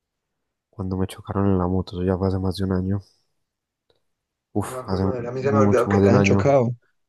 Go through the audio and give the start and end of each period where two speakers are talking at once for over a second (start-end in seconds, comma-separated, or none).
4.7-6.4